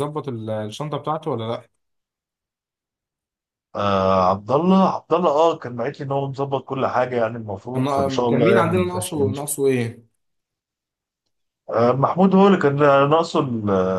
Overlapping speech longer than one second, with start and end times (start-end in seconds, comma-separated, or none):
7.7-9.6